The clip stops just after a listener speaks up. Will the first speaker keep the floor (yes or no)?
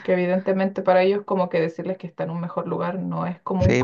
no